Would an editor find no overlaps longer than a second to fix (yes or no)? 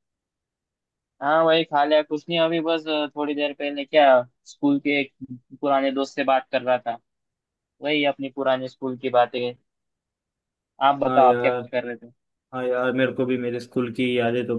yes